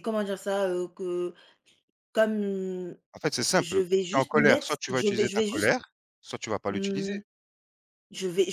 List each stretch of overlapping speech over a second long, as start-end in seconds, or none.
3.6-5.7